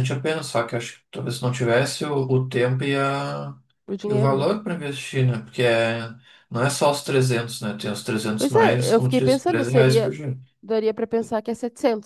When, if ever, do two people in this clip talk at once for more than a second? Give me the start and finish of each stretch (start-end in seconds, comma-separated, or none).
8.4-10.2